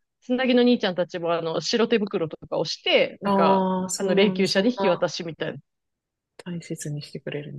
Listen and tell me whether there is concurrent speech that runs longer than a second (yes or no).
yes